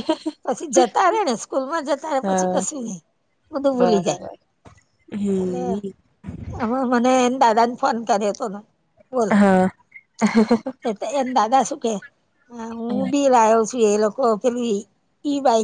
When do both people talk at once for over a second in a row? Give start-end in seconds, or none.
none